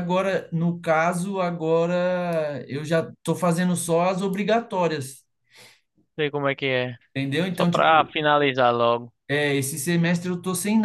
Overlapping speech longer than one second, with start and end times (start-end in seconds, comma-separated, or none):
none